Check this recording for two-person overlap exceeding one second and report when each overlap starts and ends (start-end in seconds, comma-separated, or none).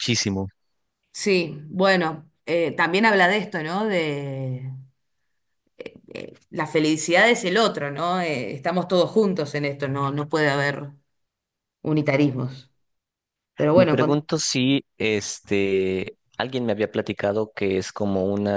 none